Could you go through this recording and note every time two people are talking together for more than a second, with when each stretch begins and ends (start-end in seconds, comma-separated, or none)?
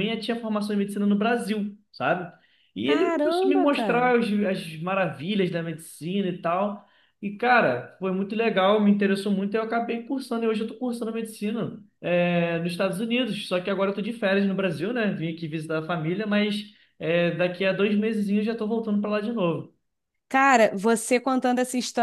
2.8-4.1